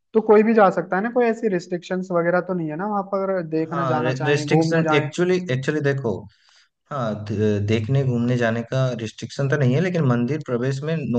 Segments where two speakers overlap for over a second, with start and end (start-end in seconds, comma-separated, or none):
3.7-5.1